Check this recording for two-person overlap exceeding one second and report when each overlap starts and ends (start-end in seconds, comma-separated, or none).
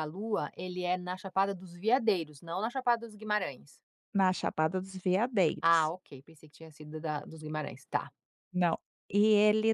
none